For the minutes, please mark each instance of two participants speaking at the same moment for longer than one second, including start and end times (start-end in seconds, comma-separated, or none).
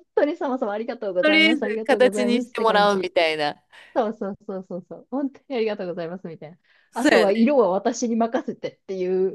1.2-3.1